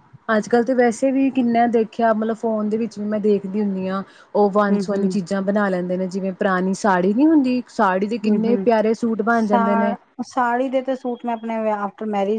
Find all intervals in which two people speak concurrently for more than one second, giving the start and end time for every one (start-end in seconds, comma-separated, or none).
none